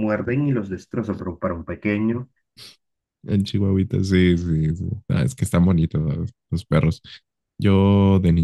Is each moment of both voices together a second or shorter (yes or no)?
yes